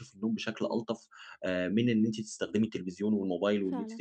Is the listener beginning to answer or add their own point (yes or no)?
no